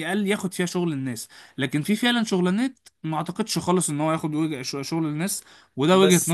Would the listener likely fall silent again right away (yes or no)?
no